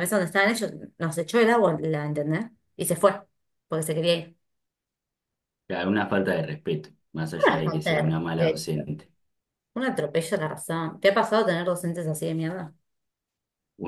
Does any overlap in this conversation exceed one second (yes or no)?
yes